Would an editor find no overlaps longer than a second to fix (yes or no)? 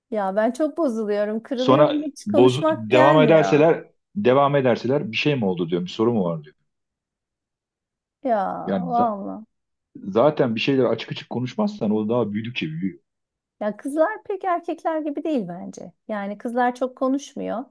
no